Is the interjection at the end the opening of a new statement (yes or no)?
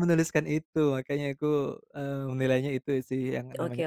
yes